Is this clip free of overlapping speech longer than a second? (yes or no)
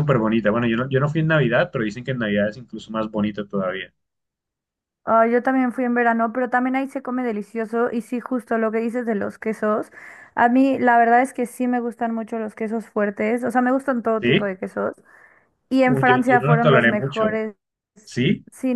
no